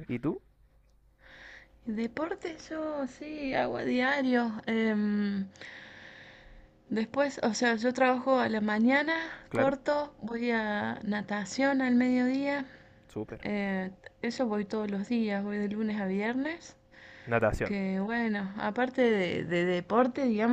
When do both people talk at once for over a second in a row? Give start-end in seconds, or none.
none